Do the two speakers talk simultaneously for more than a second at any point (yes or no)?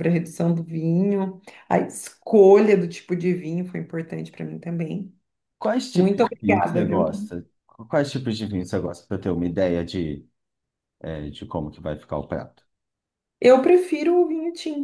yes